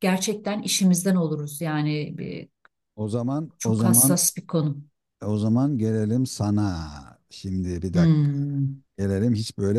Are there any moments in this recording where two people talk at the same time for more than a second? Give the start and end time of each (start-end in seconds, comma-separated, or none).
none